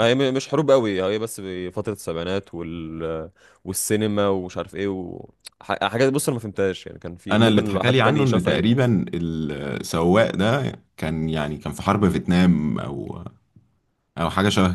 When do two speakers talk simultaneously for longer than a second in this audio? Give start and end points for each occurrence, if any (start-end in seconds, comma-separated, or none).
7.3-8.7